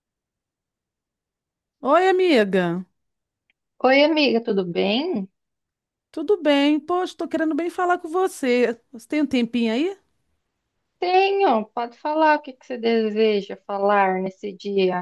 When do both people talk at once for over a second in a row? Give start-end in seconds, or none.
none